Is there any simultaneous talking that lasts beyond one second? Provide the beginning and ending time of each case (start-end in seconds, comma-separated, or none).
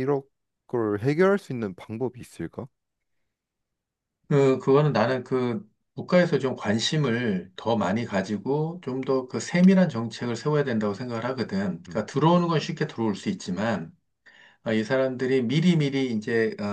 none